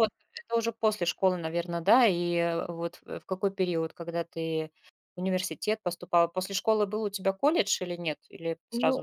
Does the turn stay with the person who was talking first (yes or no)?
no